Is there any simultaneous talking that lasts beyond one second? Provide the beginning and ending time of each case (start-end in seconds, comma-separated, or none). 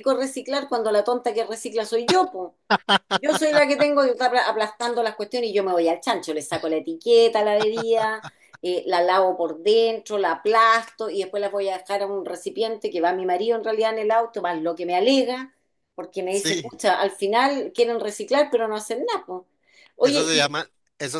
none